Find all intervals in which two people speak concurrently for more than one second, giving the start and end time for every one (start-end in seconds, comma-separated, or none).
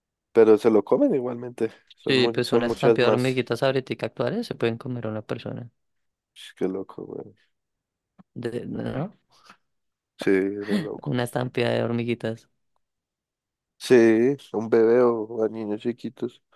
2.1-3.4